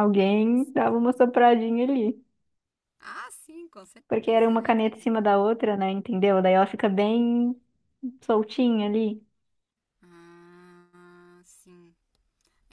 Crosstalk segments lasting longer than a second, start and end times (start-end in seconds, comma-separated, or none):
4.1-5.3